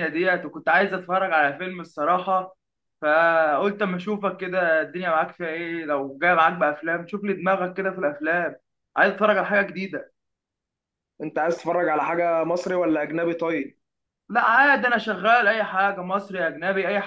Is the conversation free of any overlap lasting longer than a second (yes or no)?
yes